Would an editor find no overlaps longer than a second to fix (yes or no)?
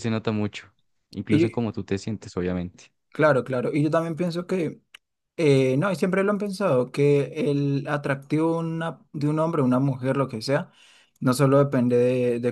yes